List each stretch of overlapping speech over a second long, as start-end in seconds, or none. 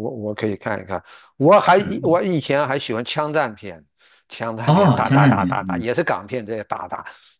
4.7-5.8